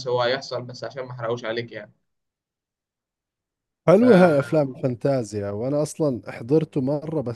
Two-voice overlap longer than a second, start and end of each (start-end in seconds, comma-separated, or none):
none